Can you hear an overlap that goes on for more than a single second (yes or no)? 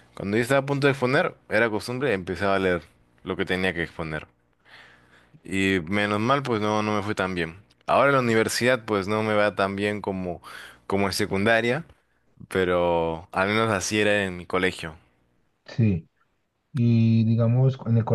no